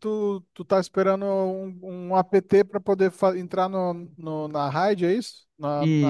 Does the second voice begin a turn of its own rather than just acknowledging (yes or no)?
yes